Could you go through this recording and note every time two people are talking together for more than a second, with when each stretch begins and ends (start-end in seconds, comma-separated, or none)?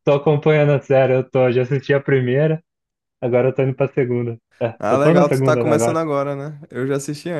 4.8-6.0